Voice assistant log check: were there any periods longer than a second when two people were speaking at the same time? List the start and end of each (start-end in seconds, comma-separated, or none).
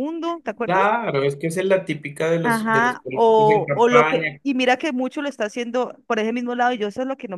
2.5-4.4